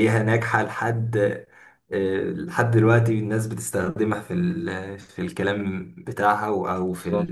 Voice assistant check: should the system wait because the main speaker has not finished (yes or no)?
yes